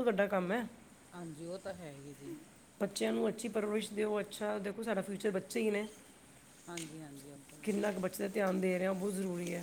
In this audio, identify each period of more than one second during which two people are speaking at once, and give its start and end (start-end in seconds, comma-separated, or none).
none